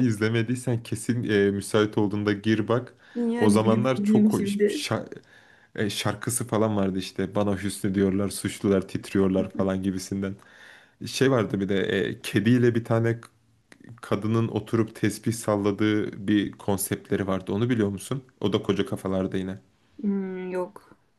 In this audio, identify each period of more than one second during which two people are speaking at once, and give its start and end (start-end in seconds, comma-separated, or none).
3.4-4.8